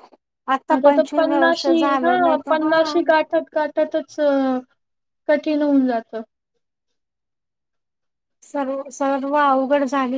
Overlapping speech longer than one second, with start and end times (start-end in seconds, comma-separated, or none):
0.8-3.0